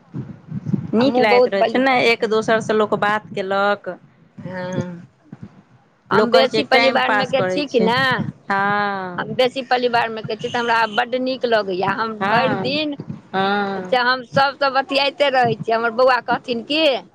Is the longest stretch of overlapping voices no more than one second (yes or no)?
no